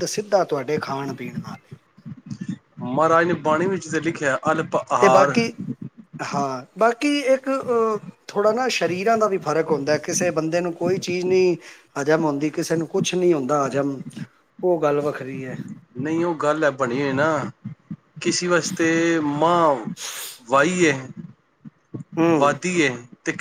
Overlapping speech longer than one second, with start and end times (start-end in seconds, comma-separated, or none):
none